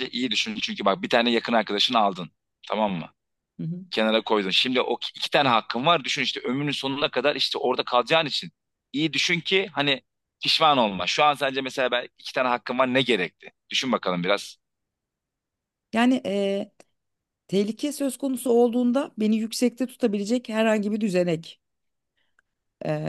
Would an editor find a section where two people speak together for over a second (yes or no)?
no